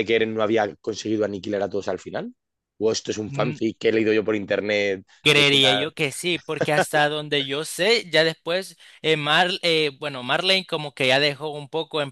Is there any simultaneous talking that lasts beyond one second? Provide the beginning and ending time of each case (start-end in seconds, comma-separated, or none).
none